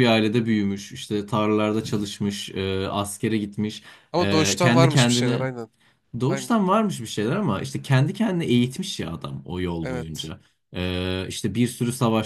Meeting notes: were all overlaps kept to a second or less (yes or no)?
no